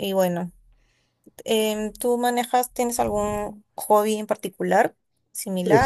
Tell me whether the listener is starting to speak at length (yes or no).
yes